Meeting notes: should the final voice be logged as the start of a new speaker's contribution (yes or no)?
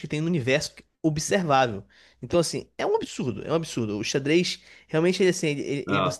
no